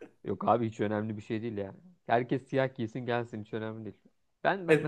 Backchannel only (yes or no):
no